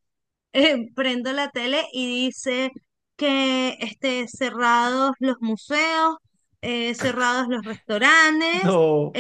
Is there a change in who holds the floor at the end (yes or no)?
no